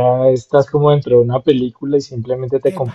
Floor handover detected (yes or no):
no